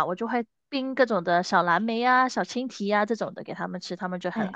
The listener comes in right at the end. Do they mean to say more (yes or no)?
yes